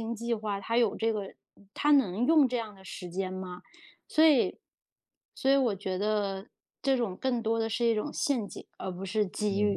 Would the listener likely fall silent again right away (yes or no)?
no